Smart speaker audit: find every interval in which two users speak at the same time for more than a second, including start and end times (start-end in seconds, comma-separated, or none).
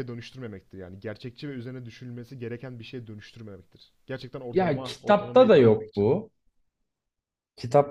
4.5-6.1